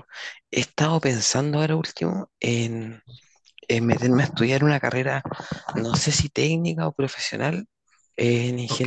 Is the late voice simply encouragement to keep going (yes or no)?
yes